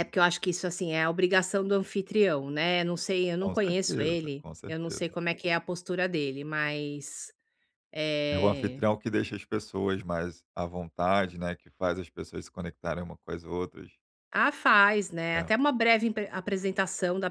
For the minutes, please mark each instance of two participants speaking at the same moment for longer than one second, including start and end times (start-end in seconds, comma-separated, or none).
3.4-5.1